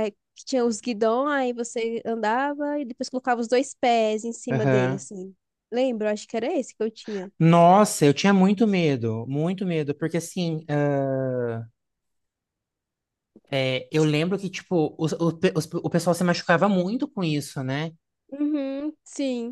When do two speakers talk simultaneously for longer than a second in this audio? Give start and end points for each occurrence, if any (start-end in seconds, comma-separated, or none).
none